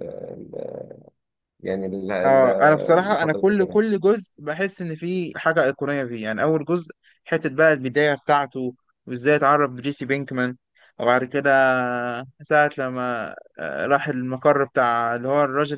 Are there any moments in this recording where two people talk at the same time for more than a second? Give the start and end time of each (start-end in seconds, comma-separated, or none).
2.2-3.8